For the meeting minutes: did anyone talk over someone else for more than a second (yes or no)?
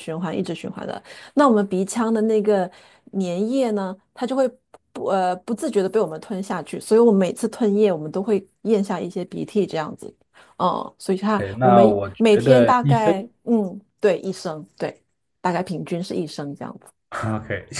yes